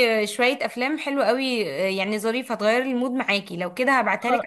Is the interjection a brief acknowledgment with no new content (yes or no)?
yes